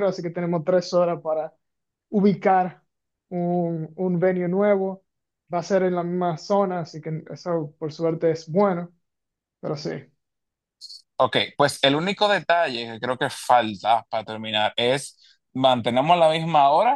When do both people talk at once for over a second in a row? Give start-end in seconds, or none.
none